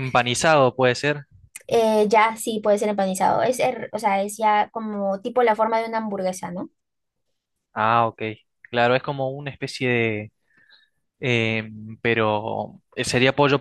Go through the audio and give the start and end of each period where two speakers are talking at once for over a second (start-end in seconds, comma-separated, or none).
none